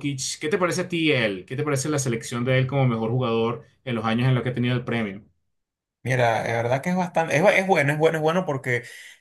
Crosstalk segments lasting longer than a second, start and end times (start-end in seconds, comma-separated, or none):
none